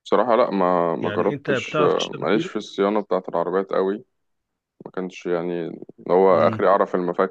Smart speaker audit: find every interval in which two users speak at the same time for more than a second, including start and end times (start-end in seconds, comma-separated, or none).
1.0-2.5